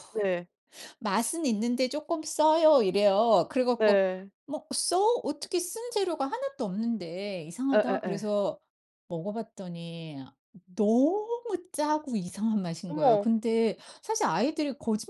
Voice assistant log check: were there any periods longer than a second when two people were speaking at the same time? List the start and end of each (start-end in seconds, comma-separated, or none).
none